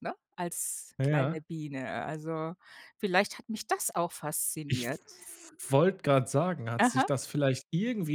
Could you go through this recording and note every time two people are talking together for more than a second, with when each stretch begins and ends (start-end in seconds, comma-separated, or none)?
none